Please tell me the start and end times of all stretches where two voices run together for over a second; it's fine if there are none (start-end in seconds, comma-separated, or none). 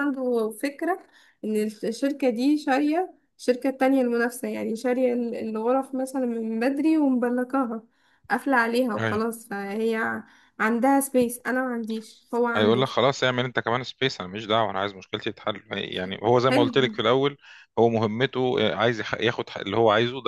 none